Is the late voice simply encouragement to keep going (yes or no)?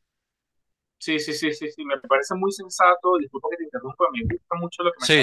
yes